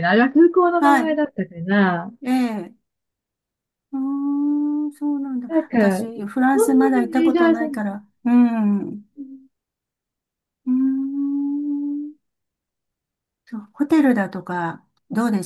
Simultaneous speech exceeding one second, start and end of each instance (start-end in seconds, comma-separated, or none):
5.5-7.8